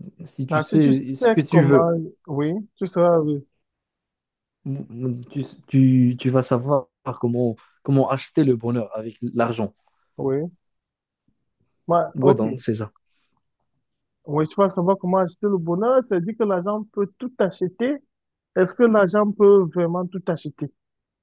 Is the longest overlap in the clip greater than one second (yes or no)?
yes